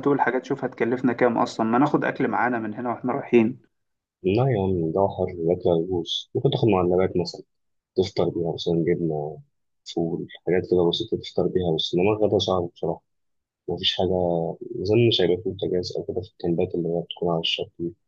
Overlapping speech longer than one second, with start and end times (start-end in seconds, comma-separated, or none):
none